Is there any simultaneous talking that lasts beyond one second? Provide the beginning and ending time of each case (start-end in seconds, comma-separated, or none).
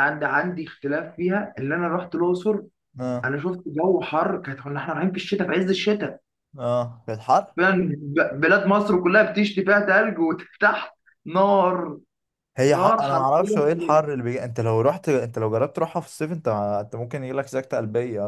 12.7-13.9